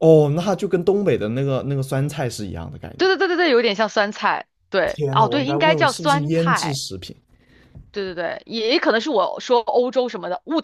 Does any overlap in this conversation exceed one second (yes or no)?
yes